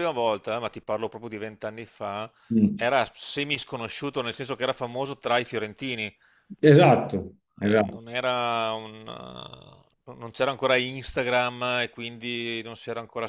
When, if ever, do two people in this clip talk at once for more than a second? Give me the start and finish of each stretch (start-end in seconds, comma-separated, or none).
none